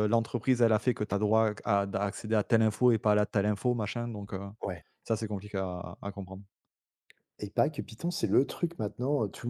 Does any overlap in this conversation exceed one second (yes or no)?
no